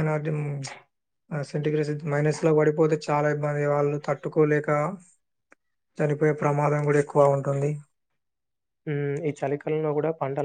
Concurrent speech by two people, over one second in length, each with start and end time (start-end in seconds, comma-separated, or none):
none